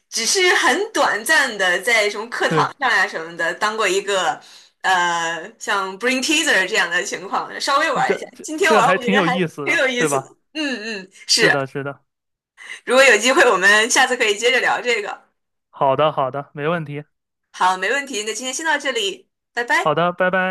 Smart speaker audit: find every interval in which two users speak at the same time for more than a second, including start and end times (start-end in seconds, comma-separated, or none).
7.9-10.4